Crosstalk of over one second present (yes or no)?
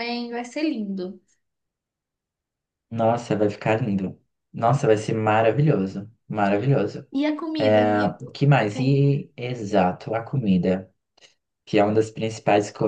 no